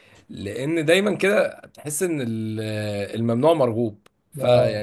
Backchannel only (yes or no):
yes